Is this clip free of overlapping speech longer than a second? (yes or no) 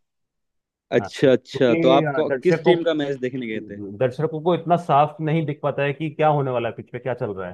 no